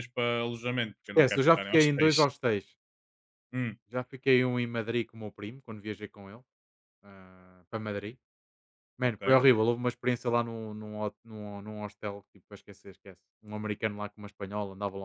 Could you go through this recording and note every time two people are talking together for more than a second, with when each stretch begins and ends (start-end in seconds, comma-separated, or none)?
1.0-2.2